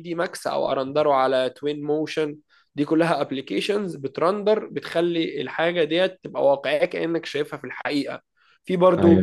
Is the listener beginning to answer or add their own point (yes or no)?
no